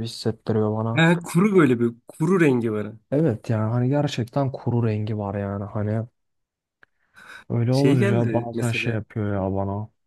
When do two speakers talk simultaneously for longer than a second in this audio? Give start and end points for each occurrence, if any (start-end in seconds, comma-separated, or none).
7.7-9.0